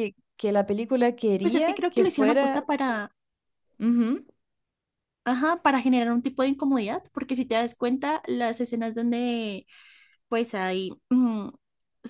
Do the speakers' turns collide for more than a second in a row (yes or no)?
yes